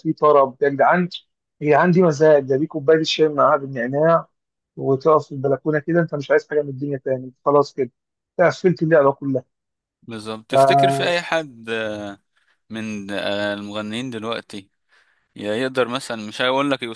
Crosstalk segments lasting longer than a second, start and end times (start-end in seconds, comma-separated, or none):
none